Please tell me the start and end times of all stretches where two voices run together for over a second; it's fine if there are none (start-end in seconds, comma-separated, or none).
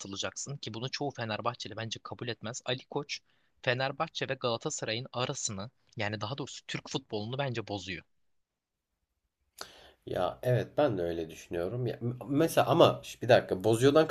none